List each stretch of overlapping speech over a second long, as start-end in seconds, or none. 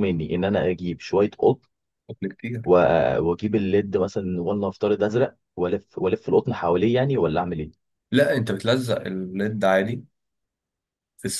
none